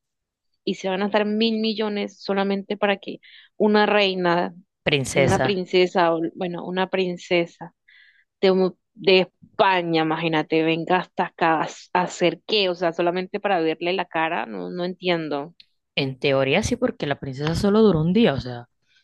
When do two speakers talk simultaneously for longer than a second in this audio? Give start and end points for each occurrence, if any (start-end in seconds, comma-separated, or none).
none